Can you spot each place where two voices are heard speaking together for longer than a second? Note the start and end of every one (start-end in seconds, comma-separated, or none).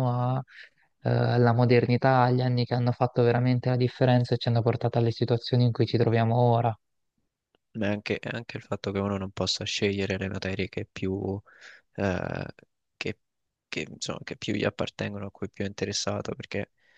none